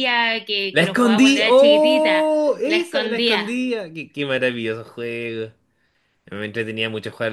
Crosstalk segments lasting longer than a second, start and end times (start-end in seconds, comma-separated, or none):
0.7-3.5